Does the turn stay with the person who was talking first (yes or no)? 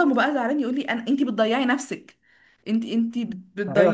no